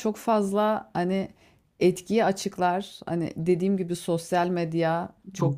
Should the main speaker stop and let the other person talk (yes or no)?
no